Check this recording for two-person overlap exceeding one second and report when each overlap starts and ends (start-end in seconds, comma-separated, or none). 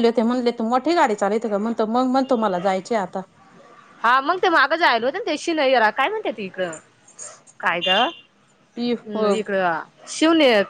none